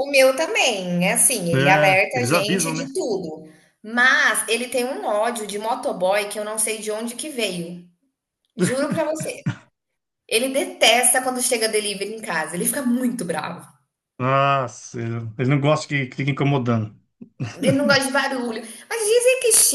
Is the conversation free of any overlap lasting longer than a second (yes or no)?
no